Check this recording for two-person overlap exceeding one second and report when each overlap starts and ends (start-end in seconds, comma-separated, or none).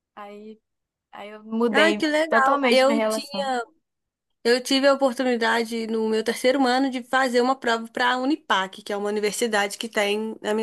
1.7-3.5